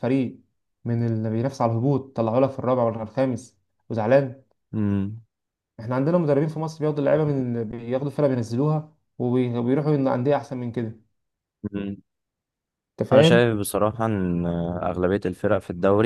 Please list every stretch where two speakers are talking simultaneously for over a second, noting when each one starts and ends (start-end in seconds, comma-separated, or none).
none